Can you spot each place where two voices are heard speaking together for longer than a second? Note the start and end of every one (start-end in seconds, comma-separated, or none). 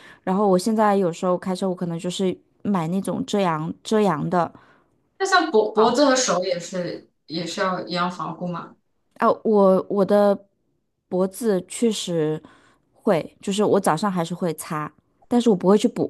none